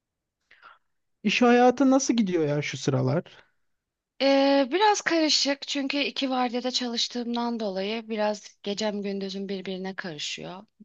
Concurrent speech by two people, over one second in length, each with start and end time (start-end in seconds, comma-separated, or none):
none